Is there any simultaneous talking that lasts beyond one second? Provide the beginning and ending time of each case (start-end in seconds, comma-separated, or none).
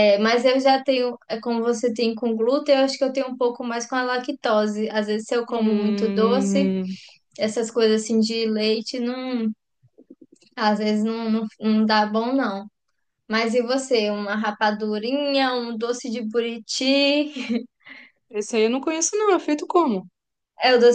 5.5-6.7